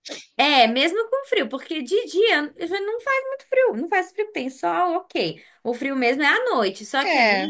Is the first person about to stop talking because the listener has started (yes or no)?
no